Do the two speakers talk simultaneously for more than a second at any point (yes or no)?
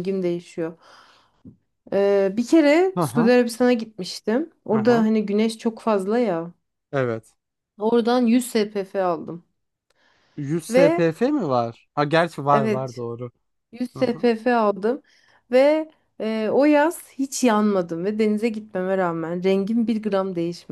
no